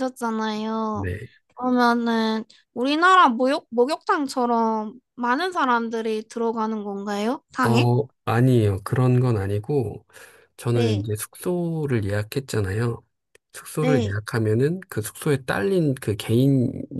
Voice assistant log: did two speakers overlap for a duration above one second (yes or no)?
no